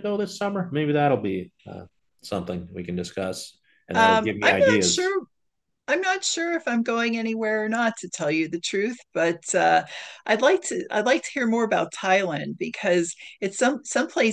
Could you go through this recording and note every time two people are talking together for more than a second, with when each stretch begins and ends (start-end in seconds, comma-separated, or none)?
3.9-5.2